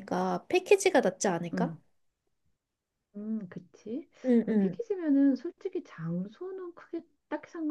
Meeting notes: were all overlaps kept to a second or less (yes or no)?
yes